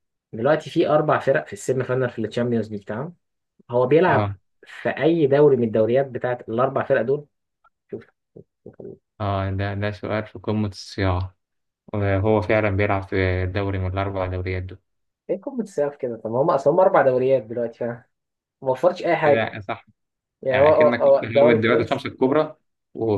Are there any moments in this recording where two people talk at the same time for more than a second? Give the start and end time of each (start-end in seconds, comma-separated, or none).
20.5-22.0